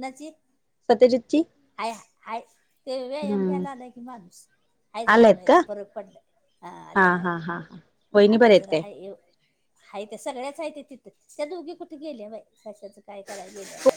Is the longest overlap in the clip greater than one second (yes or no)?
no